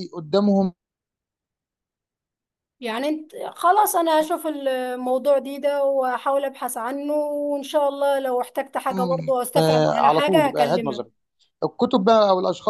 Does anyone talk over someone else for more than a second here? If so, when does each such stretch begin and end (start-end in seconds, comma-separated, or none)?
9.6-11.1